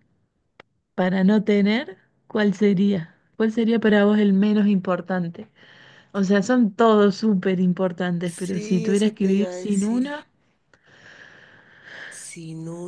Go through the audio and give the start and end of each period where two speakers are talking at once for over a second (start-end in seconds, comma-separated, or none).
8.2-10.1